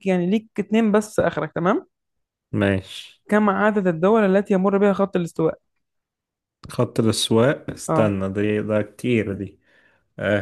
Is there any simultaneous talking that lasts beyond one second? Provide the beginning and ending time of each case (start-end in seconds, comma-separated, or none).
none